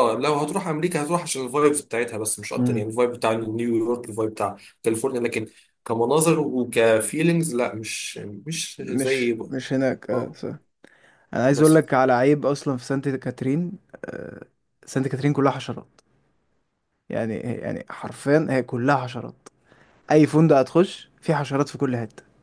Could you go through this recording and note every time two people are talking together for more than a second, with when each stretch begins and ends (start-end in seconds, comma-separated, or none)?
none